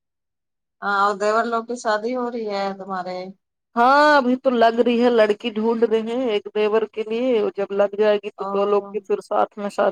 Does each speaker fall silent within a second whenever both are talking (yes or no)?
yes